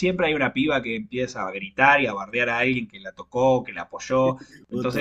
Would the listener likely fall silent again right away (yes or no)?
yes